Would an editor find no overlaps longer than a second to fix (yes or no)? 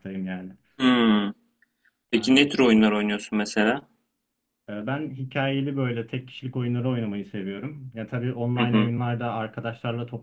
yes